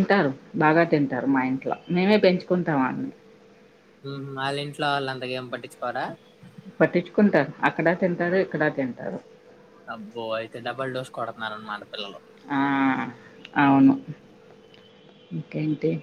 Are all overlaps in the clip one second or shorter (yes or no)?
yes